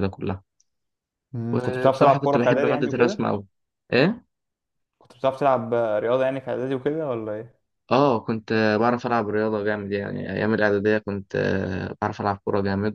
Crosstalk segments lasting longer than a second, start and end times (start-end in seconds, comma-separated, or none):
1.5-3.3